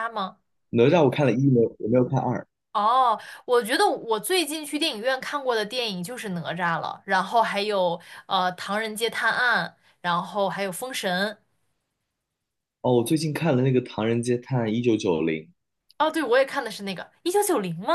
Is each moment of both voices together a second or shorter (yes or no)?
yes